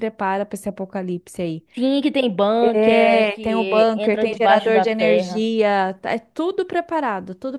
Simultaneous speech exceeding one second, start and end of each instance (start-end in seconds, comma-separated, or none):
2.6-5.5